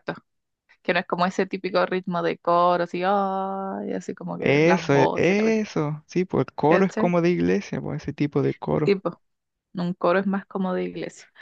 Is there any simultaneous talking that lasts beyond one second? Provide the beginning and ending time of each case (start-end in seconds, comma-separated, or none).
4.4-5.7